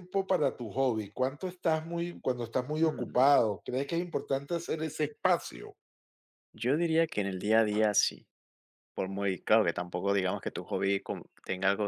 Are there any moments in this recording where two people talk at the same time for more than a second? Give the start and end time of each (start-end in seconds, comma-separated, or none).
none